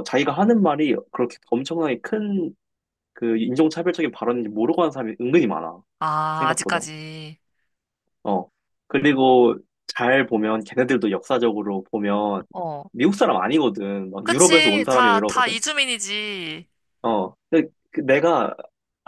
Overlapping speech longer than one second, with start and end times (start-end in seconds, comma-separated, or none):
14.2-15.6